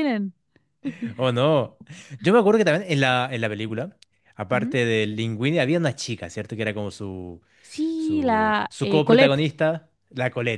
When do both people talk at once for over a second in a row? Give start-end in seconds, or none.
8.0-9.5